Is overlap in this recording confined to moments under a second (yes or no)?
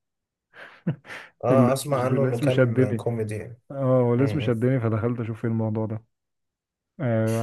no